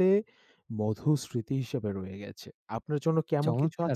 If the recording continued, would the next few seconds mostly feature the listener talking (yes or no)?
yes